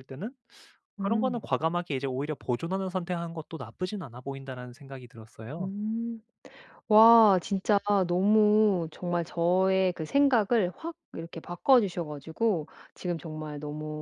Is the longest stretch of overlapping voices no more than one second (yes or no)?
yes